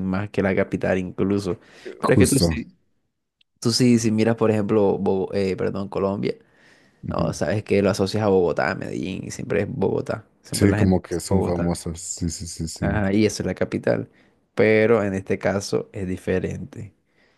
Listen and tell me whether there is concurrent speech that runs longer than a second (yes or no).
yes